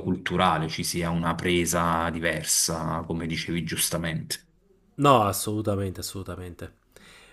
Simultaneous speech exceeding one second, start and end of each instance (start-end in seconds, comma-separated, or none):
none